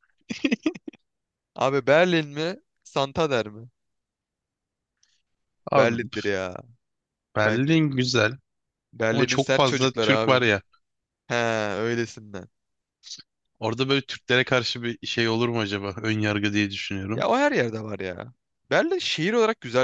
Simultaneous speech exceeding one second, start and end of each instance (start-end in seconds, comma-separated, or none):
9.1-10.4